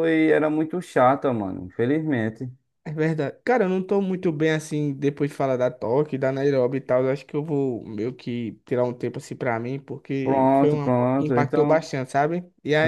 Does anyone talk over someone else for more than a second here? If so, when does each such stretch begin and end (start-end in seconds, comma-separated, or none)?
10.2-11.9